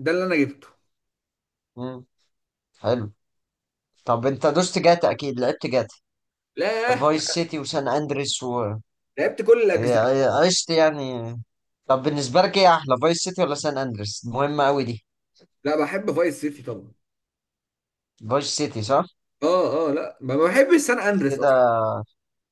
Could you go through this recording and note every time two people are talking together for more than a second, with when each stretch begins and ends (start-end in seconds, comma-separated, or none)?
none